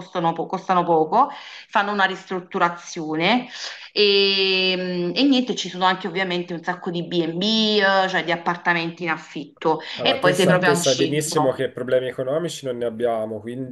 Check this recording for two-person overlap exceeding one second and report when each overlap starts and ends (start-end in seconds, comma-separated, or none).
9.9-11.7